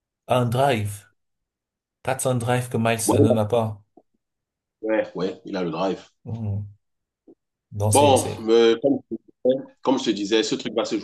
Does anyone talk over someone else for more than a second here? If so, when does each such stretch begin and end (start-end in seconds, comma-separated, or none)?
none